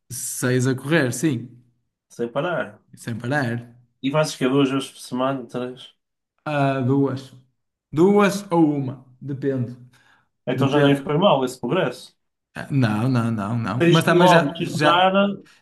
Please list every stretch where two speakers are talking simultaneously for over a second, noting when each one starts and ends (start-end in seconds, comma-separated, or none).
13.8-15.1